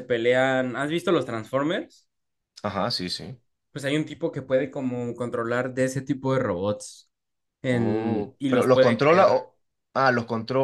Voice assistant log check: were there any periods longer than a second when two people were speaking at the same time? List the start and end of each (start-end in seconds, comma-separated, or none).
7.7-9.3